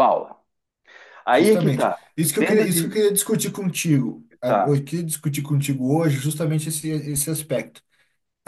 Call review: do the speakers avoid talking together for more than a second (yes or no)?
no